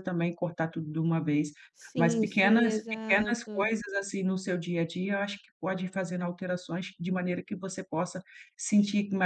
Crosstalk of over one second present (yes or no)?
yes